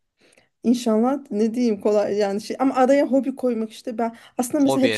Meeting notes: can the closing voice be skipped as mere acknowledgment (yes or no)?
yes